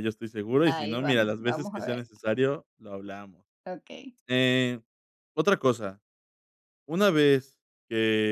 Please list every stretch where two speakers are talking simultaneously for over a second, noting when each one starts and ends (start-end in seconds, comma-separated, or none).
0.6-2.0